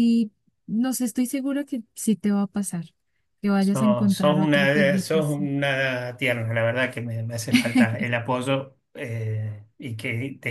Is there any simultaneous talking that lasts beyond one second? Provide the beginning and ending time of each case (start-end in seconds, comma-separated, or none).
3.6-5.5